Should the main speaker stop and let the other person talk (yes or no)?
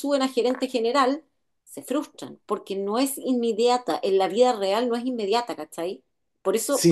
yes